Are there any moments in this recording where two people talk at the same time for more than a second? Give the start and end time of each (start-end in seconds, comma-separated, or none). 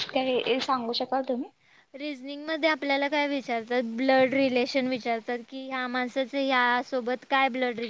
none